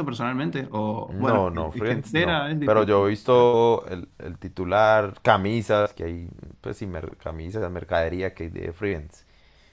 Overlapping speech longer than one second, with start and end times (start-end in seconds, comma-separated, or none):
1.1-3.5